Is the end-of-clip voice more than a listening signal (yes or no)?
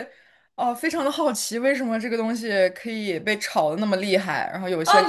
yes